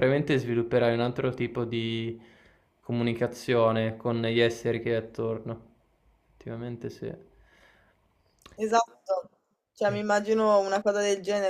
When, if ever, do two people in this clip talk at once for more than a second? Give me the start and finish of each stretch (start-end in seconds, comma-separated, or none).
none